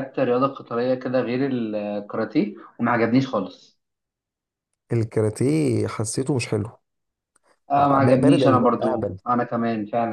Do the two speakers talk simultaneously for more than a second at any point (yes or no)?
yes